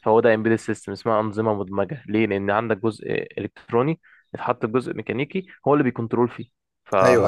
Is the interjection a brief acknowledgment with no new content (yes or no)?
no